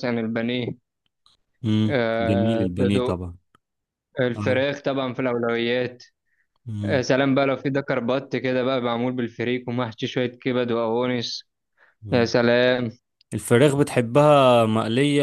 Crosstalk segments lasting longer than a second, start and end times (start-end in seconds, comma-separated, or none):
1.9-3.2